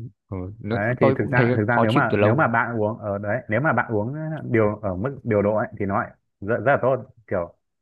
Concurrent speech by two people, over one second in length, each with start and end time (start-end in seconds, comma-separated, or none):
0.7-2.5